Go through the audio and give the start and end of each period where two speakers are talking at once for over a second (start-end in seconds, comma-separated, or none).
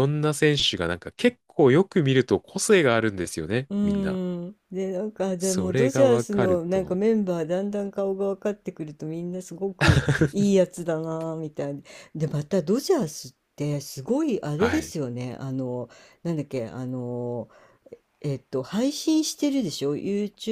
5.4-7.0